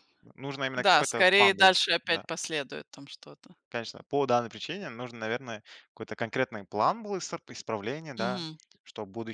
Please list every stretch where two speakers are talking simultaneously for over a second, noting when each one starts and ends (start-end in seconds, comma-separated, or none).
0.8-2.2